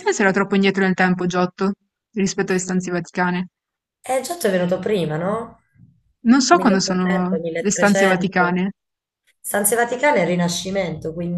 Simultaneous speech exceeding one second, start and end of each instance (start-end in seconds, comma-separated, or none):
6.5-8.6